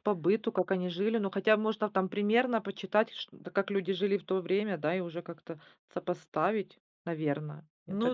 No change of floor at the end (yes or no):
no